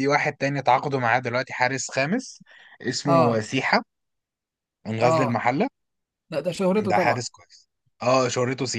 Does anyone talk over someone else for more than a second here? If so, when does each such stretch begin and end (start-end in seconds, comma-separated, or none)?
none